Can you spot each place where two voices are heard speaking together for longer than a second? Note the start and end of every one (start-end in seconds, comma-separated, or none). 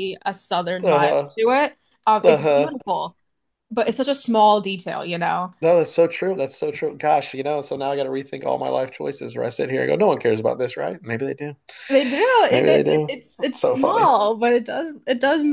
12.5-14.1